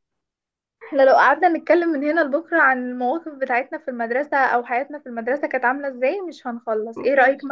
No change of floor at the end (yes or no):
yes